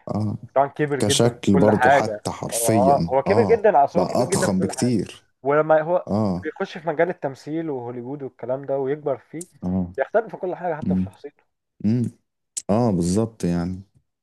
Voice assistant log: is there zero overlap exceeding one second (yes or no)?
no